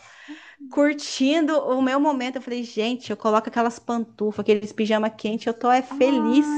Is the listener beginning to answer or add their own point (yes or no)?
yes